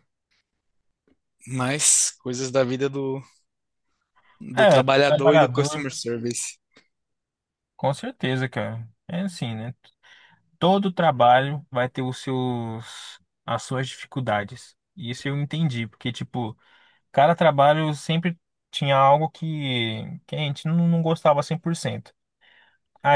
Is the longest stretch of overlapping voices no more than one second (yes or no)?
no